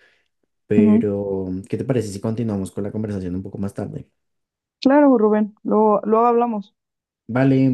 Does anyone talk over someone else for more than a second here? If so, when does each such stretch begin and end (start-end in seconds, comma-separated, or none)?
none